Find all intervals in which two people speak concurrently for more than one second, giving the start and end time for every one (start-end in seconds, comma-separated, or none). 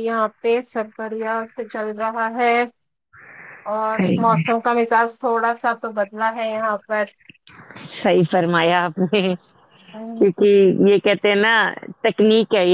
none